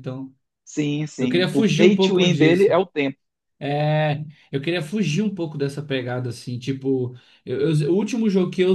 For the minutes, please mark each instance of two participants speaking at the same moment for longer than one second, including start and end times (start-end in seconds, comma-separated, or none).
1.2-2.8